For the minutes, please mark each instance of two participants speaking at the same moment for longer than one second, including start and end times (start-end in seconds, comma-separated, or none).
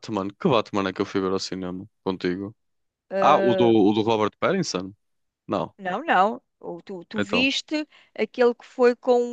none